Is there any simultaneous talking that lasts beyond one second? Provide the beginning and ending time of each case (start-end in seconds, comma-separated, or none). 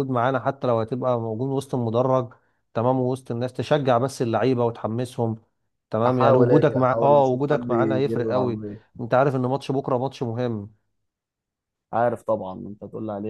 6.1-8.6